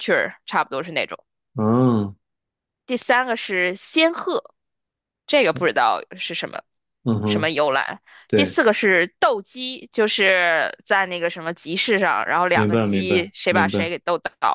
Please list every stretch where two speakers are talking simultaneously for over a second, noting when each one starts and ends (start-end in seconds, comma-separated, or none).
12.5-13.8